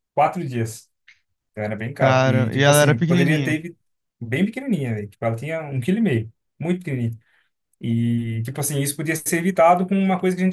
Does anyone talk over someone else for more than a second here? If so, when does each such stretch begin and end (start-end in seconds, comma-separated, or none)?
2.0-3.6